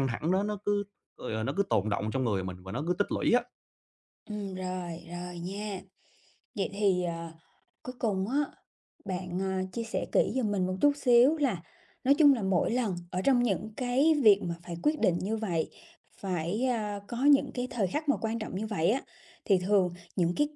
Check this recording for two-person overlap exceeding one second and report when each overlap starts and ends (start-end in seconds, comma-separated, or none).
none